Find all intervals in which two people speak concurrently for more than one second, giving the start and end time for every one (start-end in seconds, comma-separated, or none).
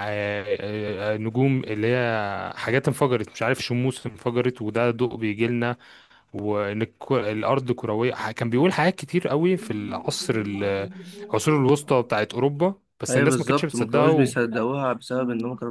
13.1-14.3